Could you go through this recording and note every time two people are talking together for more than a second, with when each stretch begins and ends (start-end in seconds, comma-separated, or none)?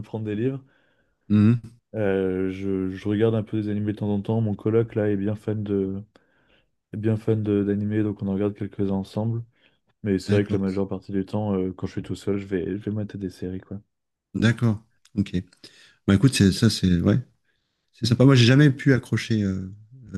none